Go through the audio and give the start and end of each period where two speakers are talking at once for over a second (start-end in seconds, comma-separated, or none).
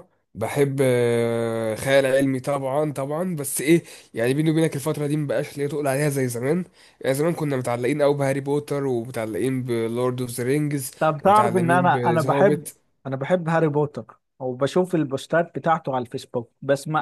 11.0-12.7